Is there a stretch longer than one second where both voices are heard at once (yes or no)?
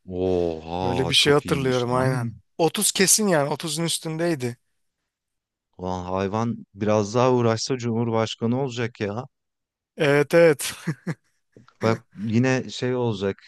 yes